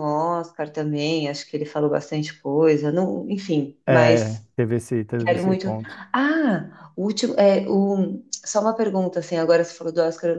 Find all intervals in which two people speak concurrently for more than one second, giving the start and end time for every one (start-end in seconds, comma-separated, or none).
none